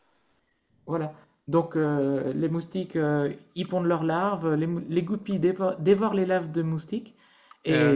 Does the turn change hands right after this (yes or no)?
no